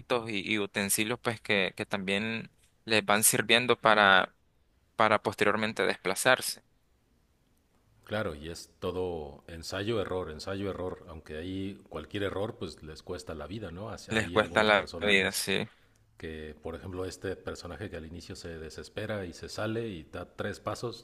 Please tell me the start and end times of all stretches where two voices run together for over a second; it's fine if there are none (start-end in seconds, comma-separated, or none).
14.1-15.4